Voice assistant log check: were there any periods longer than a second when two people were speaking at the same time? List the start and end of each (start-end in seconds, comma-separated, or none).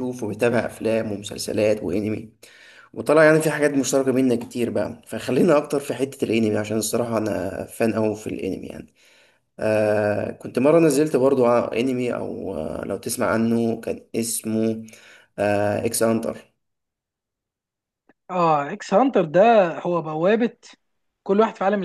none